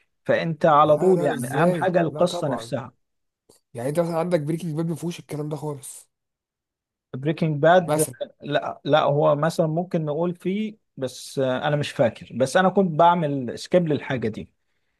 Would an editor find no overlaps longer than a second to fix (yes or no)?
no